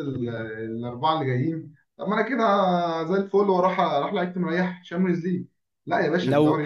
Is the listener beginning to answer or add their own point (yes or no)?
yes